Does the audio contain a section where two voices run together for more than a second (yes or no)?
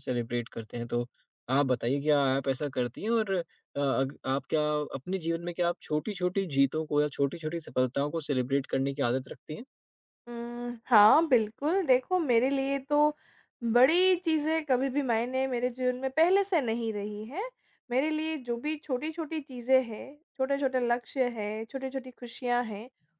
no